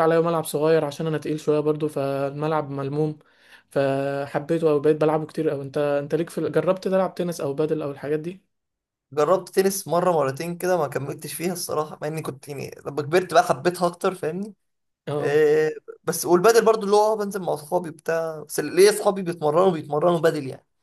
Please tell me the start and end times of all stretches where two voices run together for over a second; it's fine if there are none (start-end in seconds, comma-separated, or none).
none